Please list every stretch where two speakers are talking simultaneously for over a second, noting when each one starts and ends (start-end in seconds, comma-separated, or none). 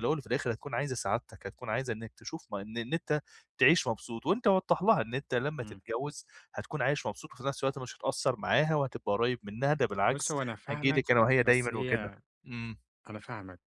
10.1-12.1